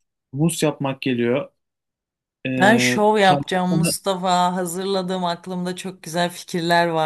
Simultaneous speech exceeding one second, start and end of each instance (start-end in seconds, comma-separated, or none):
2.6-4.0